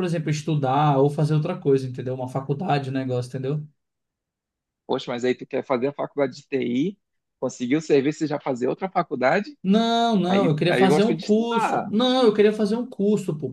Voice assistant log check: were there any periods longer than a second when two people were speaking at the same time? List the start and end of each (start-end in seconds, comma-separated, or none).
10.3-11.9